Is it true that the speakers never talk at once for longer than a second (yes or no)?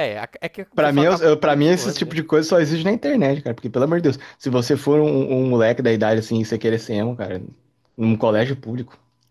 no